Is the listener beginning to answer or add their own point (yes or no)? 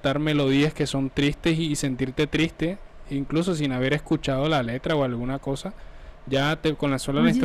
no